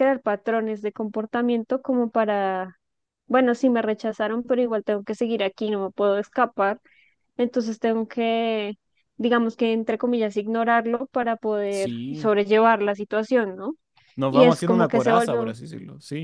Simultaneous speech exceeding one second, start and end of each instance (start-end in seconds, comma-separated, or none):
14.3-15.5